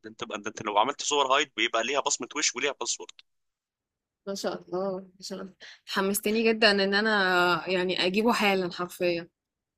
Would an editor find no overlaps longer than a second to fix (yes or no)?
yes